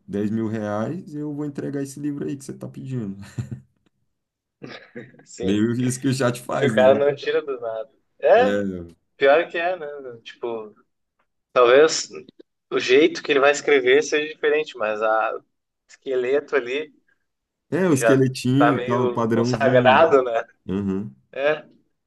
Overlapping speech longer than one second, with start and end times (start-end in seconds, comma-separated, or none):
17.9-20.1